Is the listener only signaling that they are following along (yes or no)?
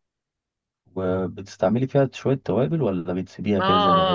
no